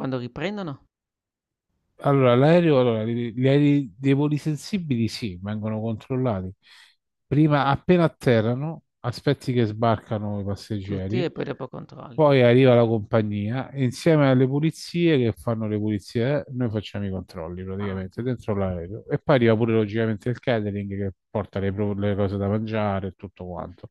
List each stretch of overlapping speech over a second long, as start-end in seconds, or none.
none